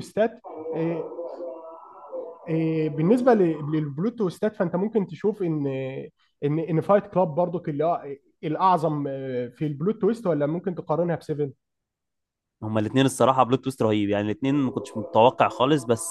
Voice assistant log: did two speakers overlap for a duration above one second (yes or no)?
no